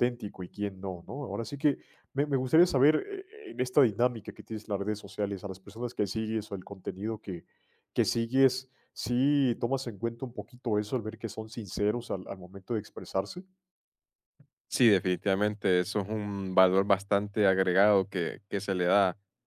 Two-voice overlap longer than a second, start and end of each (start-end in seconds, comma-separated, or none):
none